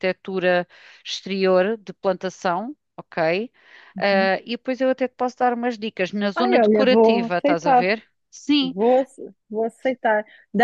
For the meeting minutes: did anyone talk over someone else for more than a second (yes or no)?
yes